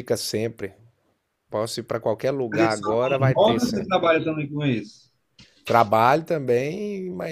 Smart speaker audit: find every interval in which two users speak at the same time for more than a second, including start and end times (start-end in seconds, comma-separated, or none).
2.5-4.0